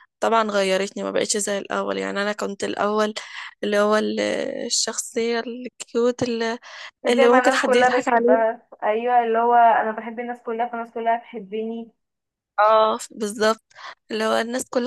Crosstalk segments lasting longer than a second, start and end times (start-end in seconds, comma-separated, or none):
7.1-8.4